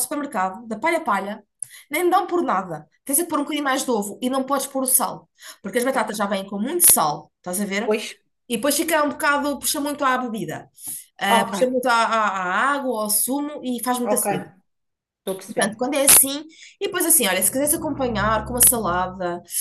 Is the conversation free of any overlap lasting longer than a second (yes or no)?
yes